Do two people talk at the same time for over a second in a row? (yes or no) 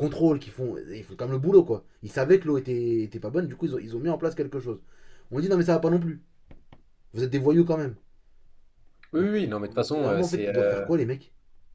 yes